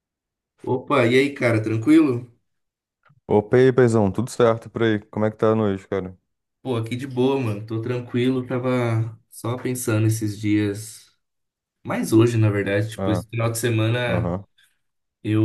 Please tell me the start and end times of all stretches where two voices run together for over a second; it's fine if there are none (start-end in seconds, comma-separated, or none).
none